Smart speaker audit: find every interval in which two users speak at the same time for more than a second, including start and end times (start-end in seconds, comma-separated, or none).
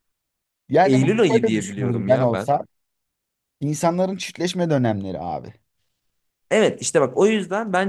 0.8-2.5